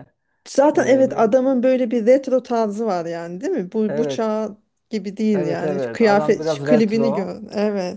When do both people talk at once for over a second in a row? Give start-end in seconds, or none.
5.3-7.4